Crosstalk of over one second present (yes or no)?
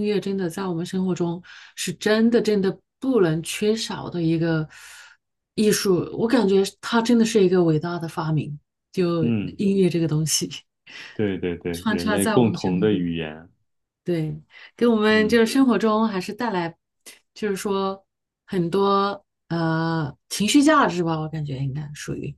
yes